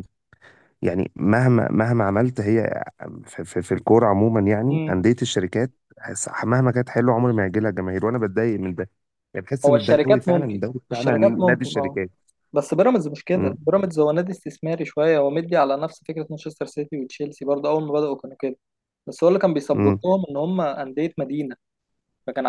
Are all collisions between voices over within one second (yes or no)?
no